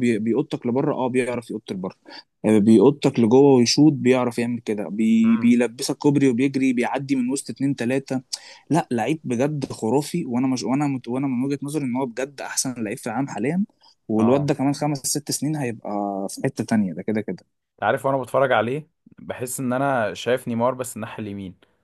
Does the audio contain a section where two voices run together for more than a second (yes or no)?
no